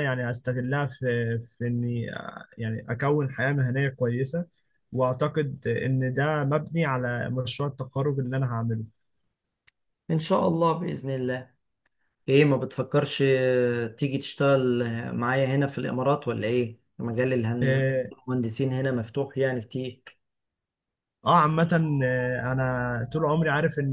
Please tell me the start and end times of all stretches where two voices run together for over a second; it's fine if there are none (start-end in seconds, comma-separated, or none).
none